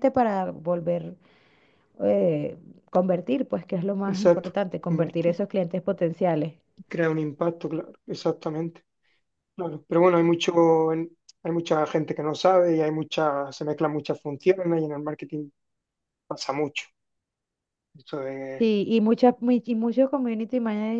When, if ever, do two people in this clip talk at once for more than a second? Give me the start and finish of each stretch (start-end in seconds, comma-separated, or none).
4.1-5.4